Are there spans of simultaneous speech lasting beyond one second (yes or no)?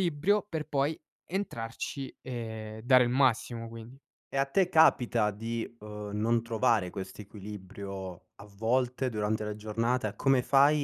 no